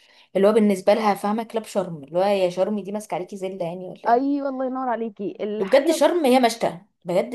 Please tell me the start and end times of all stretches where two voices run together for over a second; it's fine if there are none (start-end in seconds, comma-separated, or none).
none